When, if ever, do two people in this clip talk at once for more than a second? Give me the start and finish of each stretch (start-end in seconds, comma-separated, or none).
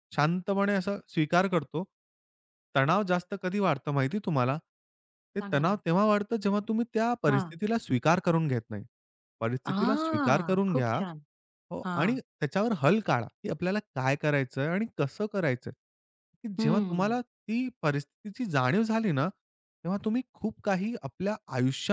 9.7-11.0